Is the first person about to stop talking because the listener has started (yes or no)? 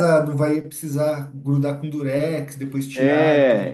yes